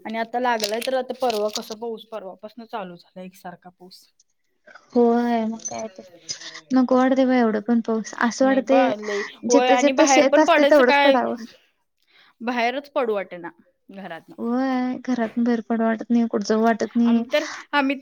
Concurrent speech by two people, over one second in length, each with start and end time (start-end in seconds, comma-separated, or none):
9.5-11.2